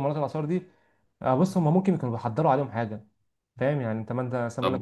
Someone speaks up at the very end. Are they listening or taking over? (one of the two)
listening